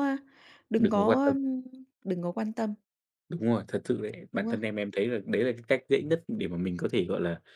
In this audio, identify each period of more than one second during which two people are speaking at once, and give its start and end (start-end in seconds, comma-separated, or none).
none